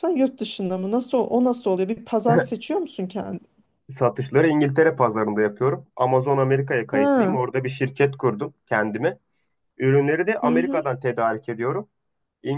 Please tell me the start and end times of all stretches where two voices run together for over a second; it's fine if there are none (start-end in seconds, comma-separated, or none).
none